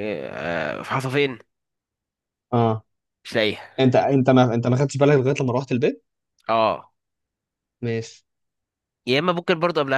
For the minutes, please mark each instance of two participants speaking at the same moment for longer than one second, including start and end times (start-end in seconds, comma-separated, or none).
none